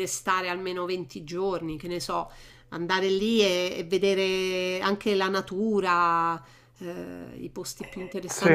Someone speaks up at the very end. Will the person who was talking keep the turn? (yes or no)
yes